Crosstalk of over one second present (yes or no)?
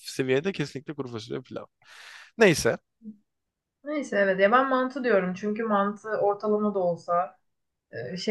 no